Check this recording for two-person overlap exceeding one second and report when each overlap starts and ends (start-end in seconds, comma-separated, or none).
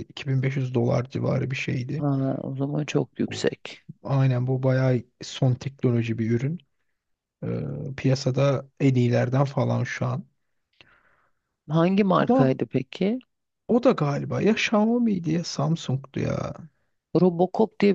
none